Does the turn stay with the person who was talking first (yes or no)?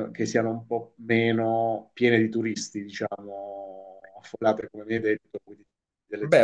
no